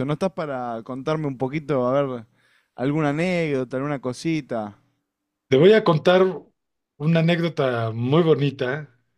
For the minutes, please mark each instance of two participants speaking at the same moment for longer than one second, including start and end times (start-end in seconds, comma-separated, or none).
none